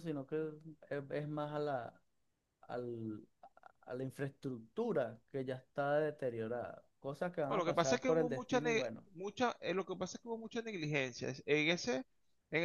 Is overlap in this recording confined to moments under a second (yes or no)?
no